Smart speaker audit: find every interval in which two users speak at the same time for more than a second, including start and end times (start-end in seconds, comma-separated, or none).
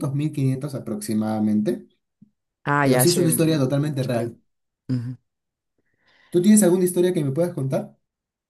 2.8-4.3